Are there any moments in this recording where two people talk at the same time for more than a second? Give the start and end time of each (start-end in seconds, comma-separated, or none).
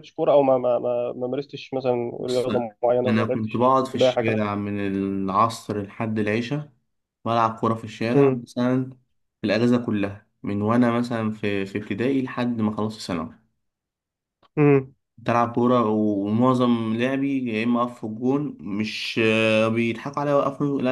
3.1-4.4